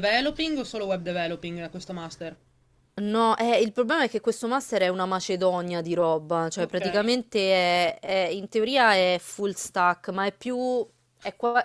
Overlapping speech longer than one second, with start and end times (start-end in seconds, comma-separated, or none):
none